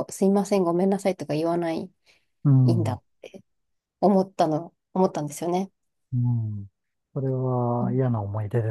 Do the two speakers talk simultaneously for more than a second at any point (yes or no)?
no